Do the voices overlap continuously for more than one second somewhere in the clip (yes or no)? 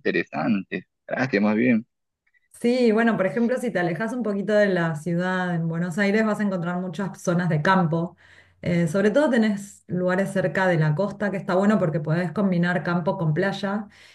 no